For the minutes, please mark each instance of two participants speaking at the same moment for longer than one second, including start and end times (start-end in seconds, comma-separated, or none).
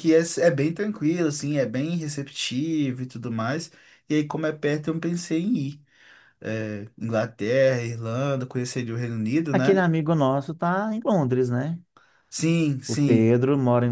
none